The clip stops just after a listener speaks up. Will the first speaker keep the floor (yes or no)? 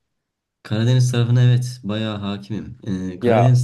yes